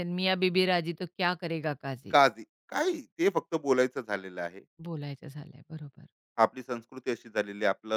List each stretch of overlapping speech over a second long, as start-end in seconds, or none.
none